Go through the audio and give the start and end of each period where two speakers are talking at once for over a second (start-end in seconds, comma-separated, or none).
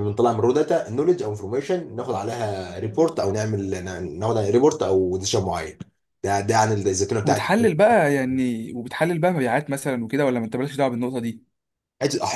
none